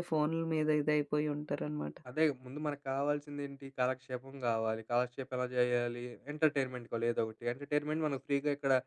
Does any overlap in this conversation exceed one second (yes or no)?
no